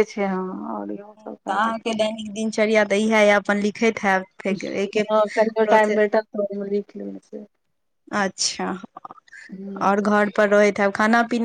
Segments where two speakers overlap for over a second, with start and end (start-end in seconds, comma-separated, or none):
none